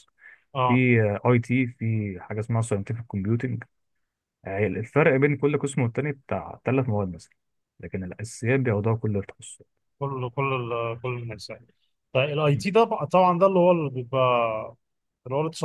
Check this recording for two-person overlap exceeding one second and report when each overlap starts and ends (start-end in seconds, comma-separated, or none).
none